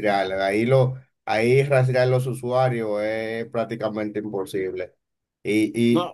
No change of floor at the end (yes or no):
yes